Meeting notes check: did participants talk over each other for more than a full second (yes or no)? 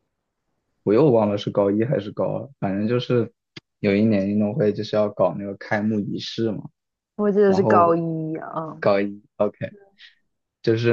no